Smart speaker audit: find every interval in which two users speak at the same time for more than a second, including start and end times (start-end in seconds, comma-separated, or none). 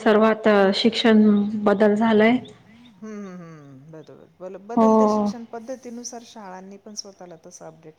none